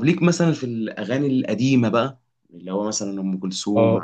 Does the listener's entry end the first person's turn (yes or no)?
yes